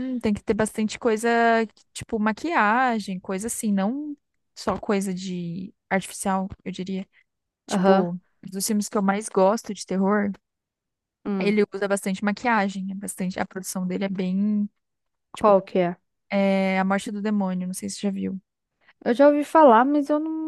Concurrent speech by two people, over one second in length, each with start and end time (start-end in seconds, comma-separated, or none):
none